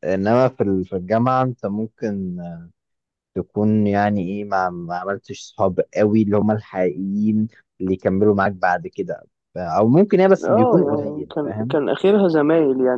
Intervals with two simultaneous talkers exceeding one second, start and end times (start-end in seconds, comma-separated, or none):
10.4-11.8